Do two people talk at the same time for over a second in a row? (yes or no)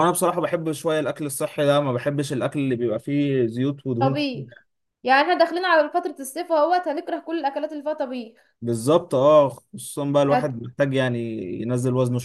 no